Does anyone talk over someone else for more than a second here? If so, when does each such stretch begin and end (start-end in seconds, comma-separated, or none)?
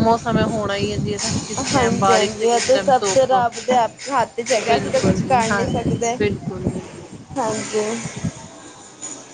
1.7-3.4, 4.7-6.2